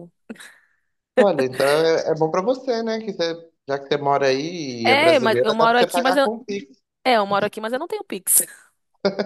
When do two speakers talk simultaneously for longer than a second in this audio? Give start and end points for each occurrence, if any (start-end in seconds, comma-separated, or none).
4.8-6.2